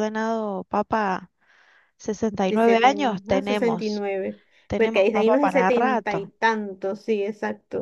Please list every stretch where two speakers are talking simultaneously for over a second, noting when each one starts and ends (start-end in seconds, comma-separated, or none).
2.5-4.0, 4.8-6.3